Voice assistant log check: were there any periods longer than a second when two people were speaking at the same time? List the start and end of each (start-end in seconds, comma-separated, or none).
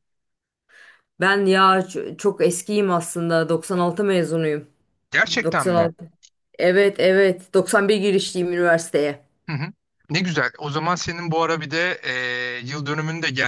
none